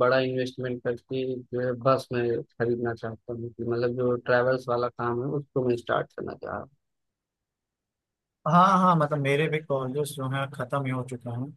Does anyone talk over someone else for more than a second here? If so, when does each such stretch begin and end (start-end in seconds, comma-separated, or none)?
none